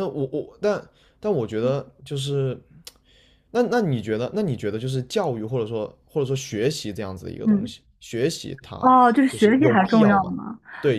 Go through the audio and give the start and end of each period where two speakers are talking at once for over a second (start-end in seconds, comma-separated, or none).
8.8-10.3